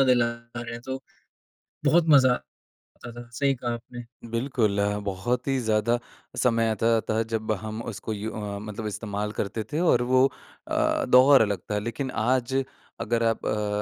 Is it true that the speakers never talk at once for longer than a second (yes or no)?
yes